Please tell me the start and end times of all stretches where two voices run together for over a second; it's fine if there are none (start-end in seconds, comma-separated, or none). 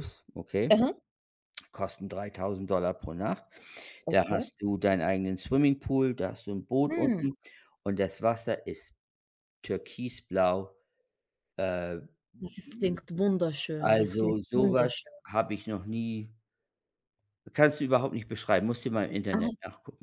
13.8-15.1